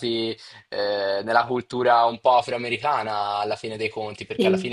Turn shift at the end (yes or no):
no